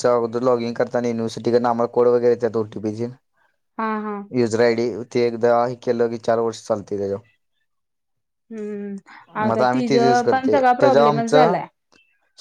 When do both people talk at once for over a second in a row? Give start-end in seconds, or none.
9.9-11.6